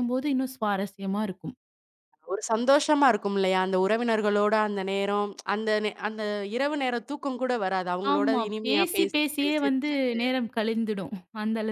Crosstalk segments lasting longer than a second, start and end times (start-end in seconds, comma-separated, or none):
8.1-10.2